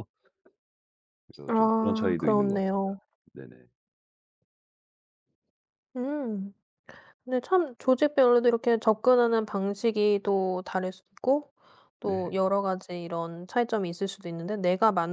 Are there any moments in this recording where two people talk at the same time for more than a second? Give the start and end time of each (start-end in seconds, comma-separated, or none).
1.5-3.0